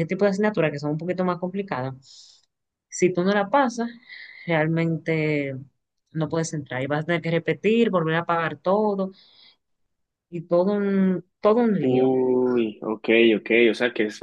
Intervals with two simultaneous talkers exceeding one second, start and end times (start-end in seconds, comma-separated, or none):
none